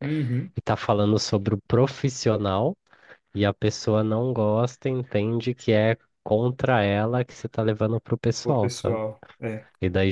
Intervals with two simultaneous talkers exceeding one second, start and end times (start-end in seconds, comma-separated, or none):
none